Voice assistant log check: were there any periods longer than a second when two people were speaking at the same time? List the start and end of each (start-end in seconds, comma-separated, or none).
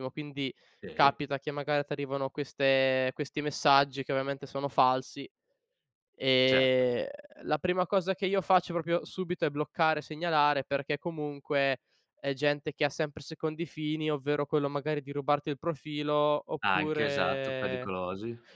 16.6-17.9